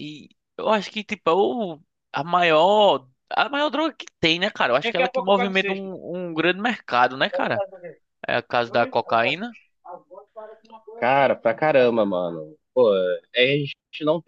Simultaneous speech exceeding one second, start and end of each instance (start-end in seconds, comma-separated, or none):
none